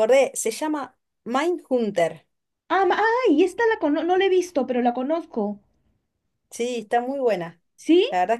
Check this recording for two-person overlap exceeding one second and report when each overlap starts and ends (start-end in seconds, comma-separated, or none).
none